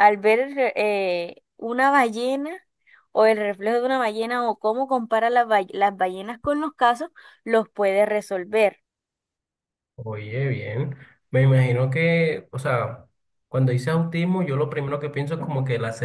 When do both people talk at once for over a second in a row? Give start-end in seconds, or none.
none